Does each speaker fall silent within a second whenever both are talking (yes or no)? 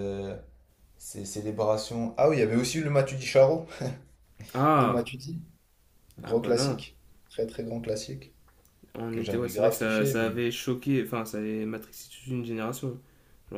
no